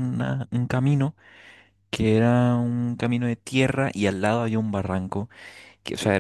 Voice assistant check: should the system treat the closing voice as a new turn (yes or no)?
no